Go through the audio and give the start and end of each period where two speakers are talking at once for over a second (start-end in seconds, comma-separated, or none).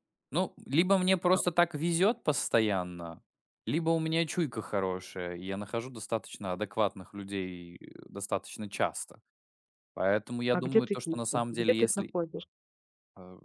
10.5-12.1